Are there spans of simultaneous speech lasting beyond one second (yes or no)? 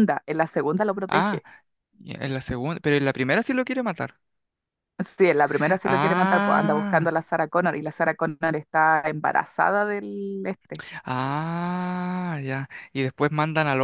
yes